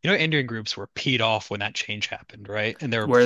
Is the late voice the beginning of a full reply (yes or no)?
no